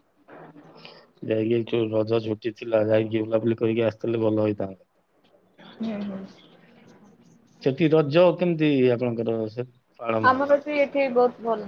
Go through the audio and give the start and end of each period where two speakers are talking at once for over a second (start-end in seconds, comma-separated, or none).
none